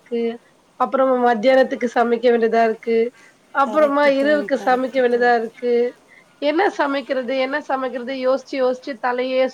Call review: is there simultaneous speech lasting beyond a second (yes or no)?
yes